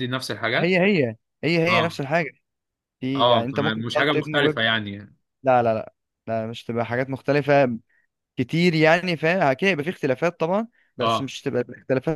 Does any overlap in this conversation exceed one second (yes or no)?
yes